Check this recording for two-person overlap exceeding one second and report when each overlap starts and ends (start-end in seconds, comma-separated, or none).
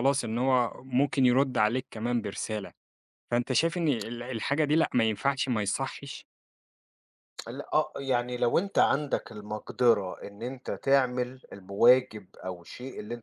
none